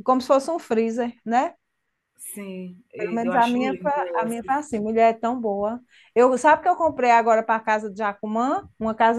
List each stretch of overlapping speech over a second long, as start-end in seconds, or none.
3.0-4.5